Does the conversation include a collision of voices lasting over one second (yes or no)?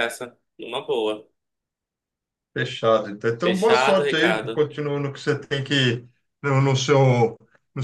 yes